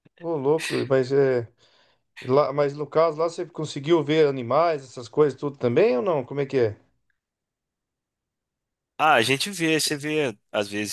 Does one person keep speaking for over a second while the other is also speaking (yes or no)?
no